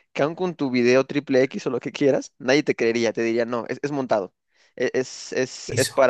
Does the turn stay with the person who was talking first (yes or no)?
yes